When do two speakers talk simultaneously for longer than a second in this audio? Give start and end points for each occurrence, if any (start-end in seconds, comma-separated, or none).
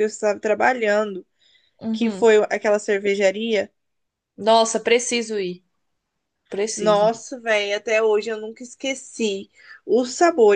none